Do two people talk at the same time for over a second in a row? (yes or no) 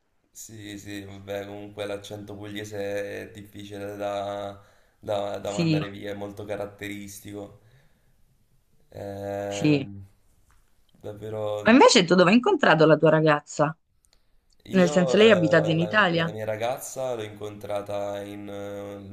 yes